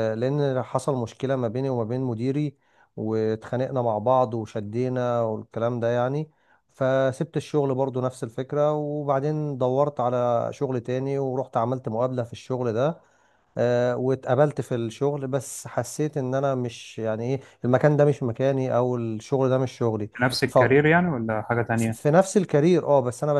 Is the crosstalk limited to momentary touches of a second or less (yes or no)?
yes